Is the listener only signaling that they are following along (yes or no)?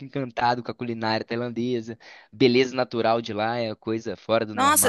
no